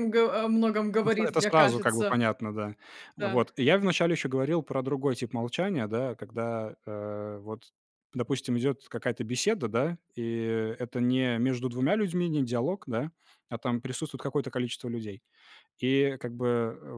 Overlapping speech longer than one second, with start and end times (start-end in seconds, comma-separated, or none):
0.9-2.2